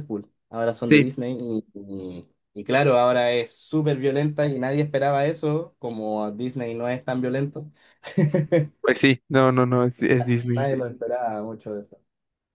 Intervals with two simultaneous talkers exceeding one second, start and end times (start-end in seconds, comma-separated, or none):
none